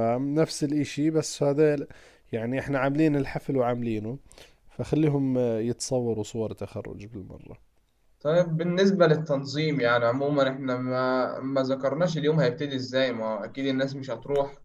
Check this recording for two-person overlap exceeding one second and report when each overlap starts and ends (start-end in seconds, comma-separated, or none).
none